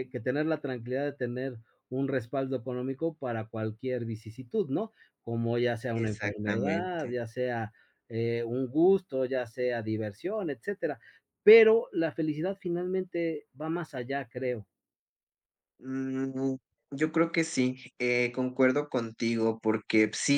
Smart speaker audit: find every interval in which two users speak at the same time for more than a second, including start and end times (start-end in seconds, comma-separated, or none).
6.0-7.2